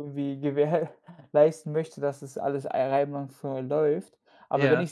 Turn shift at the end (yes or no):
no